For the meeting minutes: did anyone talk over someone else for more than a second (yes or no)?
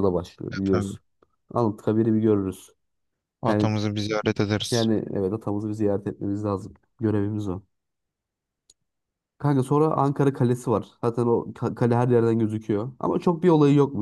no